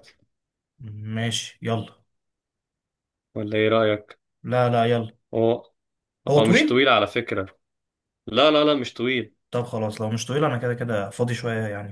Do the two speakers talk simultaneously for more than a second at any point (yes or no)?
no